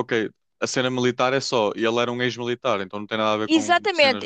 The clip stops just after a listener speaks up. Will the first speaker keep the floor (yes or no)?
no